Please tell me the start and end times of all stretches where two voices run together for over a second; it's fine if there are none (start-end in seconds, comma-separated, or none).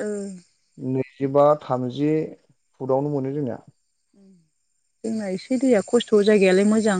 none